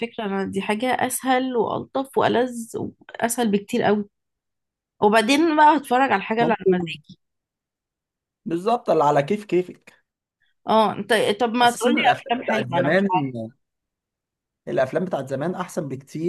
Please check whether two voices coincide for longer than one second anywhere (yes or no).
yes